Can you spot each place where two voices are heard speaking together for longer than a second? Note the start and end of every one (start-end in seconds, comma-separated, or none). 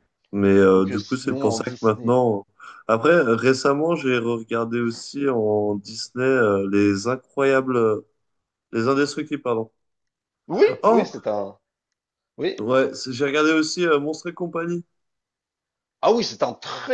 0.7-2.2